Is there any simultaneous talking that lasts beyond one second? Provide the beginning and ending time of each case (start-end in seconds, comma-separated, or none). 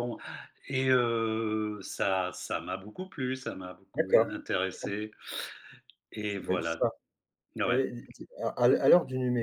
none